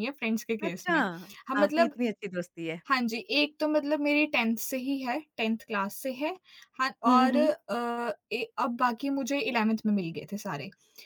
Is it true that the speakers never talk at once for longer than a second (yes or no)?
yes